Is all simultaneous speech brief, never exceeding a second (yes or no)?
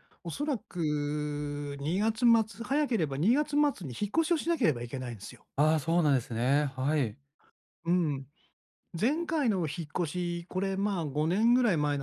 yes